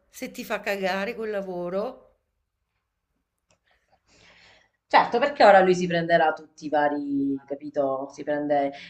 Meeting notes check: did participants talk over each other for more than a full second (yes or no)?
no